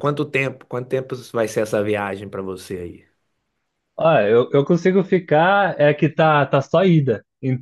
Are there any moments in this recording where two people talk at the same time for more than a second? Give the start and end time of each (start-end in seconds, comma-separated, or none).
none